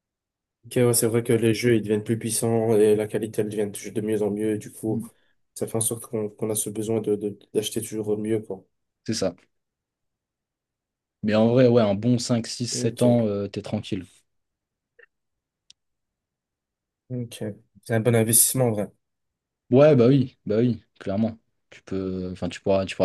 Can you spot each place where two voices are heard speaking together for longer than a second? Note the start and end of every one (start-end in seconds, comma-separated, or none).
none